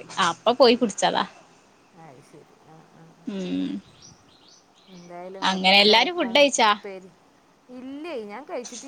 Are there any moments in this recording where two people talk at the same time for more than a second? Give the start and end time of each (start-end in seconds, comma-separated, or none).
none